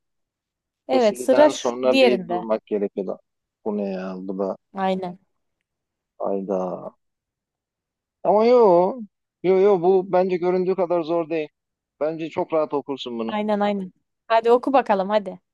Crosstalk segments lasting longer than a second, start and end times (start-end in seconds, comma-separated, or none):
0.9-2.4